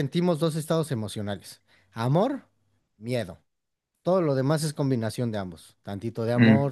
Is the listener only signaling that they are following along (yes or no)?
yes